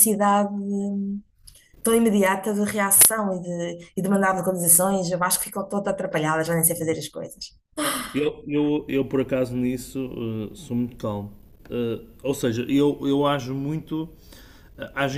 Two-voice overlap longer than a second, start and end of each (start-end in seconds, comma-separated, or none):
none